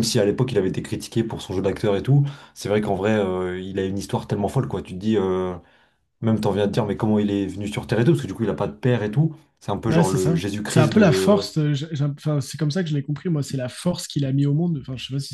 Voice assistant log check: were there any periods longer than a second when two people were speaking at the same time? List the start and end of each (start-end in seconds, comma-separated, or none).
9.9-11.5